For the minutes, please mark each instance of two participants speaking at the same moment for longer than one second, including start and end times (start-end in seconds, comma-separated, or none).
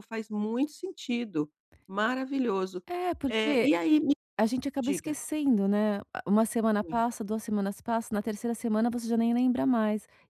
none